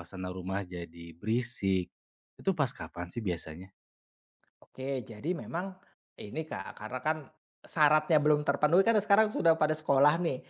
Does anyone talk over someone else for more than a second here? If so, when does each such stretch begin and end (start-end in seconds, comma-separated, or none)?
none